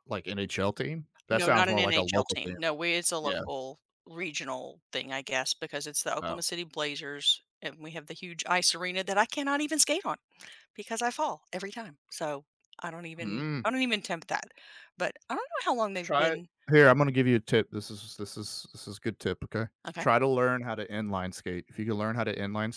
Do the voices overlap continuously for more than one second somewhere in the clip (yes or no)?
yes